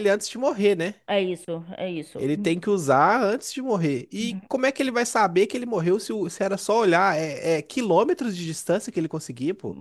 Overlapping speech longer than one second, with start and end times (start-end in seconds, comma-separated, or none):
none